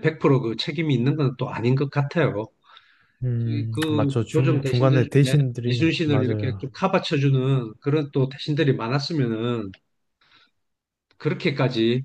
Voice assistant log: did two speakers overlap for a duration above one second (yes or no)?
yes